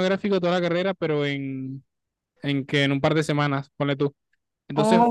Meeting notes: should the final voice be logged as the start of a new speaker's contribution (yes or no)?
no